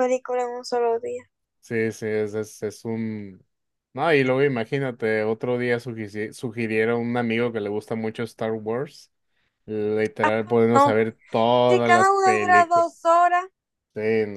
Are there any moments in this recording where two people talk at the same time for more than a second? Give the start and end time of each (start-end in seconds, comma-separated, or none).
11.7-12.9